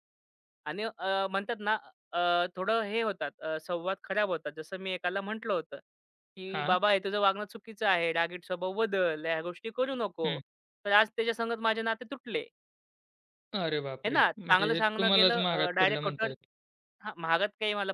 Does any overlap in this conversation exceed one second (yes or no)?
yes